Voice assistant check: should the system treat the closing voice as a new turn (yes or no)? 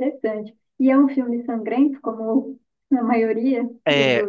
yes